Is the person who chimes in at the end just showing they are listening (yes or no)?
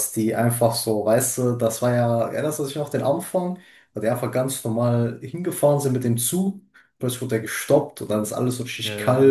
yes